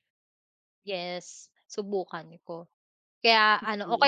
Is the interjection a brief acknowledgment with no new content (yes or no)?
yes